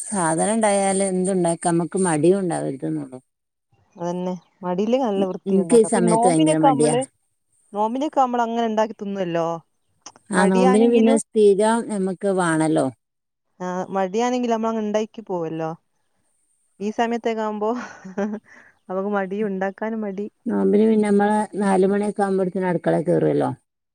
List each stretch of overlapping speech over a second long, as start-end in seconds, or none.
5.5-6.9